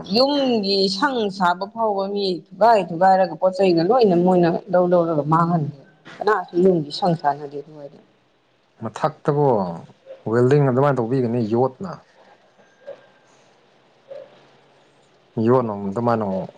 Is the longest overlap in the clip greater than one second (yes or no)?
no